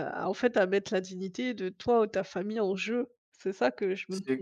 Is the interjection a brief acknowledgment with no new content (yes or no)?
no